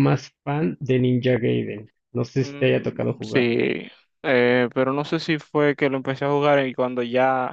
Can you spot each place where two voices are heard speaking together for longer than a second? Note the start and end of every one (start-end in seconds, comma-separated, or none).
2.4-3.6